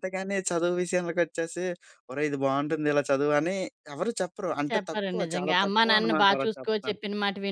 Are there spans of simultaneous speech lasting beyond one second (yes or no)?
yes